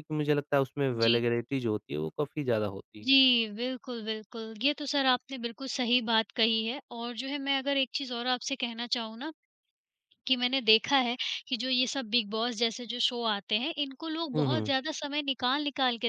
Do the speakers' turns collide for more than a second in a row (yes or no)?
no